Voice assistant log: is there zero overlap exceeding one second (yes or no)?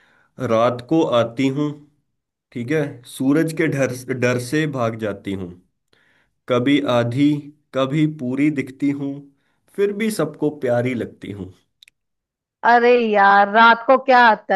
yes